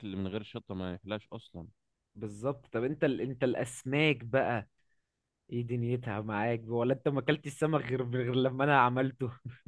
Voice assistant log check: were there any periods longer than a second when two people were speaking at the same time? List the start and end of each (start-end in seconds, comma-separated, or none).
none